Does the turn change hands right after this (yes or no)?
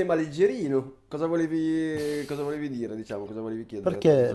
yes